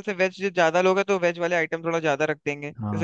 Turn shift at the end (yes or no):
yes